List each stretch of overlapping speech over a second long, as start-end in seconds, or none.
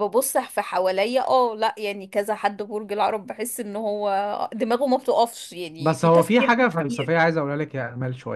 5.8-7.1